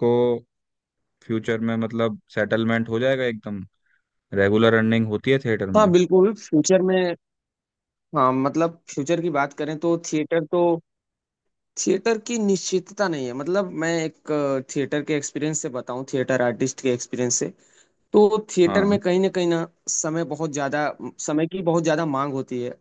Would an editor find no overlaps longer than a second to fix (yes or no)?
yes